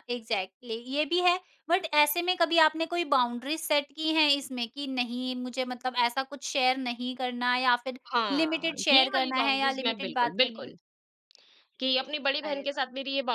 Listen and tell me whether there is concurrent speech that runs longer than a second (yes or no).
yes